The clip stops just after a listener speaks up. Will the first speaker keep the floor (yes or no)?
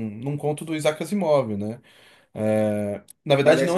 yes